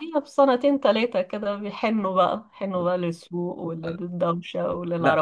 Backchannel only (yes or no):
no